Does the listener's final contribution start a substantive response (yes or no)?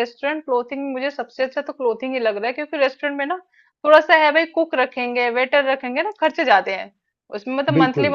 no